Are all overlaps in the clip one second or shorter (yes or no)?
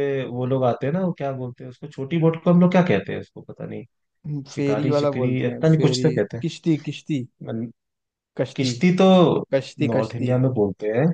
no